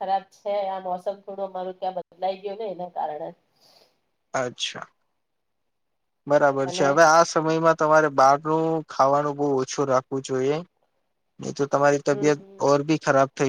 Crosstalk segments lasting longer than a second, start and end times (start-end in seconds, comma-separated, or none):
none